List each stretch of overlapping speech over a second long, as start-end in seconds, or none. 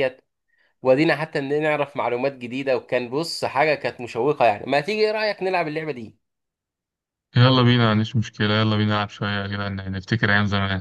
none